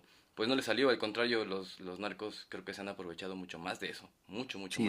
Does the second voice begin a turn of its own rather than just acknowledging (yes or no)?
yes